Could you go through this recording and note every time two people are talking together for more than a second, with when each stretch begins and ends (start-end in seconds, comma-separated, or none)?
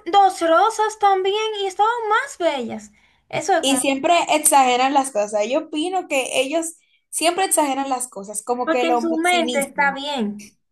8.6-10.0